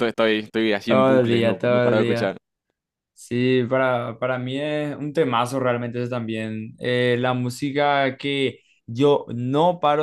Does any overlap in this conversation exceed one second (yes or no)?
yes